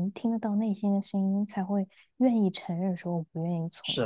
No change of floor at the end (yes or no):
no